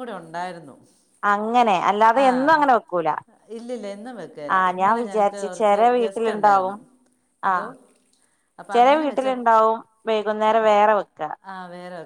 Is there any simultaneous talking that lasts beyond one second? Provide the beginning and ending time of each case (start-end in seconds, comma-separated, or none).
4.6-6.8